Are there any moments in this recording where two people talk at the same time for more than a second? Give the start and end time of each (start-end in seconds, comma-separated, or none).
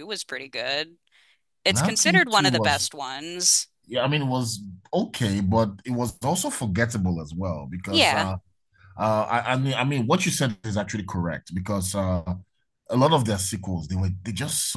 1.7-2.9